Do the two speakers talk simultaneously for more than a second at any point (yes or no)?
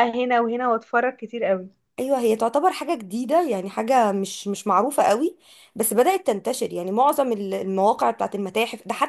no